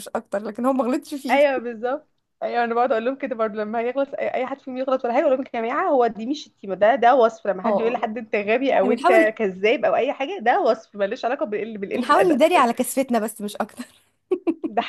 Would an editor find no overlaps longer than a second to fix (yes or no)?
yes